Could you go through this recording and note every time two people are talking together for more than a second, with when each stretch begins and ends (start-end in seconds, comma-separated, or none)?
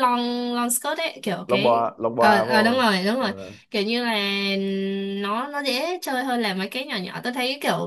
1.5-3.3